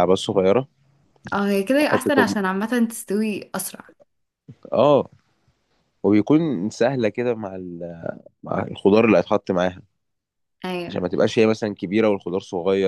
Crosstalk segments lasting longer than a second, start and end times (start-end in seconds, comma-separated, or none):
none